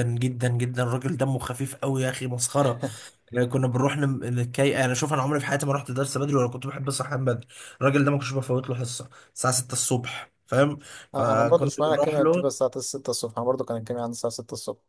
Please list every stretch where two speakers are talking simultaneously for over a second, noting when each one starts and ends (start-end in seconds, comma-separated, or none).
11.1-12.5